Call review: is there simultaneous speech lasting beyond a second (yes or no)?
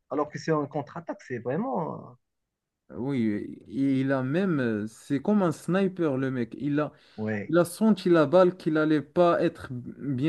no